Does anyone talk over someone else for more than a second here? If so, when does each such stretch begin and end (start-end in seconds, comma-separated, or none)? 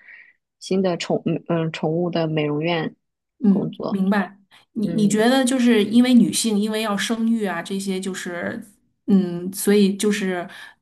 none